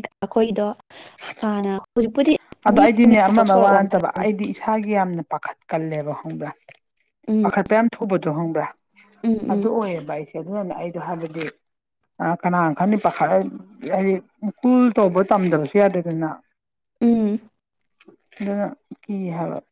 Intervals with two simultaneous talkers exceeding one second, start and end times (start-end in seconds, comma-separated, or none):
2.8-4.3